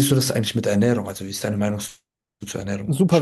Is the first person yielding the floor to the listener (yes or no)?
yes